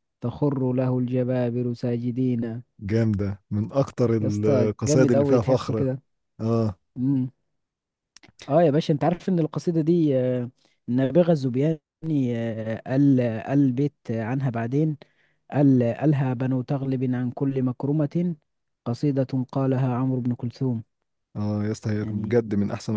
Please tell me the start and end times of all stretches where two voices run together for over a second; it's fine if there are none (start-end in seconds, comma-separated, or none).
4.2-5.9